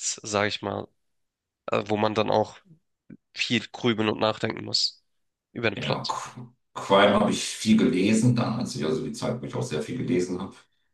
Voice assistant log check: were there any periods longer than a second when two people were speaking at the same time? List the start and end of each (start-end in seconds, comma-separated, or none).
none